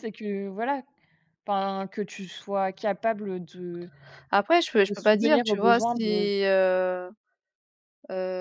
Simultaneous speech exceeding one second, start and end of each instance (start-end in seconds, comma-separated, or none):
4.9-6.3